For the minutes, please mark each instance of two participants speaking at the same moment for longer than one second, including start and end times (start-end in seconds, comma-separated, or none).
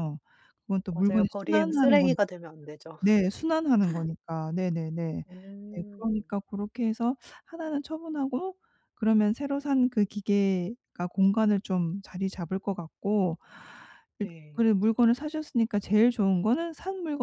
0.9-2.2